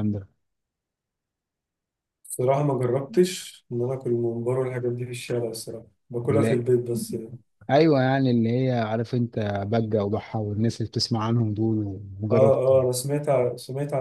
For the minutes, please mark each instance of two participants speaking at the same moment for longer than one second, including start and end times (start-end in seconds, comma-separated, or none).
none